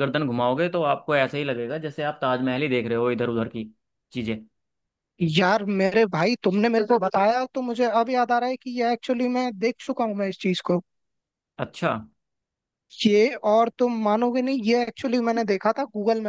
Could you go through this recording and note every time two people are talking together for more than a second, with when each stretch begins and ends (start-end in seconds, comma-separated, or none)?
none